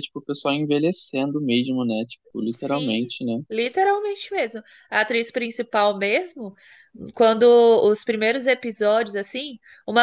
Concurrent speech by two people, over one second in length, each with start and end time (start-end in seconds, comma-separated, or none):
none